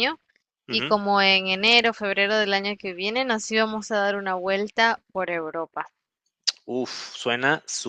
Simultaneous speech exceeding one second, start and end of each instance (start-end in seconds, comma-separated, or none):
none